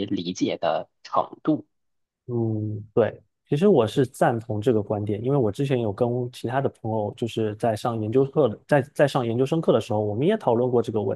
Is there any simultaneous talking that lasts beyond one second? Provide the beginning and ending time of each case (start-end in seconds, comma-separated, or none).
none